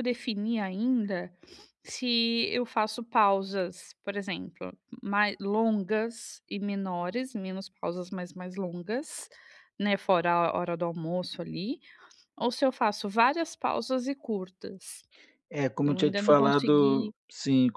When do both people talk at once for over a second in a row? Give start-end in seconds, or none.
15.8-17.1